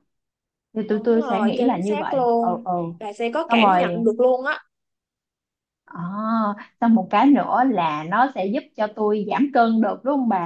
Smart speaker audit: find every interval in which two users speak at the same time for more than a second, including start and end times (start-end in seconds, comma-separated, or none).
0.9-2.7